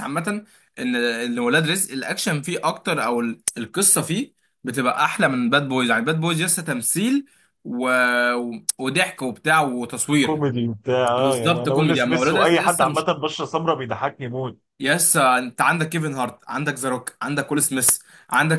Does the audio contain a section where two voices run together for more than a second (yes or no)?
yes